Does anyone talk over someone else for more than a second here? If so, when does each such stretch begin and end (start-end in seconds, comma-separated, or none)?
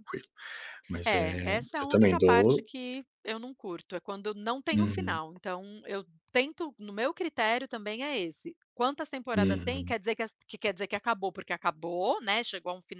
1.0-2.6